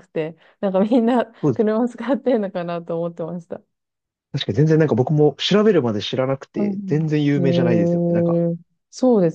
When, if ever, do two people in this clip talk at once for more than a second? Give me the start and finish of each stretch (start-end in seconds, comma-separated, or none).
6.5-8.4